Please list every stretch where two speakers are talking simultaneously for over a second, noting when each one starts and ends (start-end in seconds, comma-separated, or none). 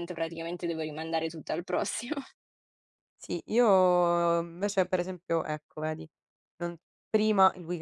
none